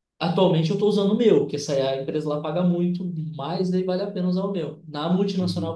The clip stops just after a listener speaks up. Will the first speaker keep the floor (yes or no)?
yes